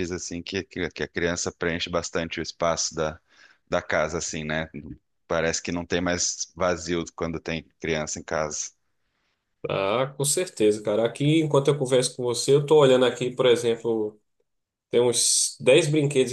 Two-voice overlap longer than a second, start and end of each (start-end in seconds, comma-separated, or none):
none